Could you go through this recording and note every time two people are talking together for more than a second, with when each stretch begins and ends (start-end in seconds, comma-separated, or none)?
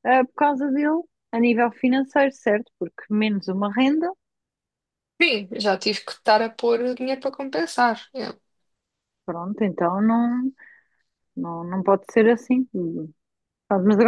none